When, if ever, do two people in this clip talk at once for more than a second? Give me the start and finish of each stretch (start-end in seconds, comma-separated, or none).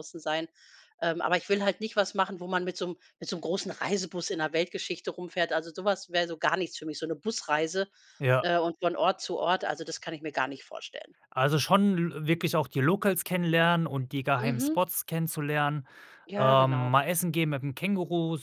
none